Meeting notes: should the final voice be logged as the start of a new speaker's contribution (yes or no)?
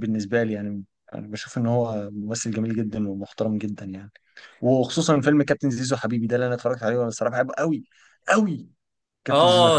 yes